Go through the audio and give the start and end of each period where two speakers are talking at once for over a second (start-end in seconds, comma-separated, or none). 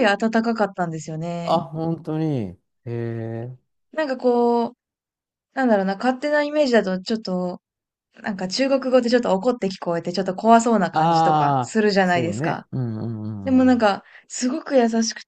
10.9-12.7